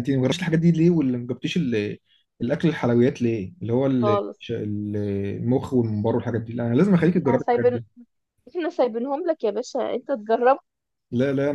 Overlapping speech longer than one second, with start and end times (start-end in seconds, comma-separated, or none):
none